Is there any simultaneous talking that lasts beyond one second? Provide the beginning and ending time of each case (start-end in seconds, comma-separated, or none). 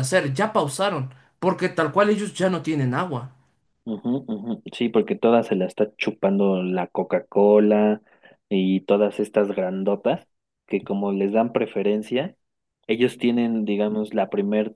none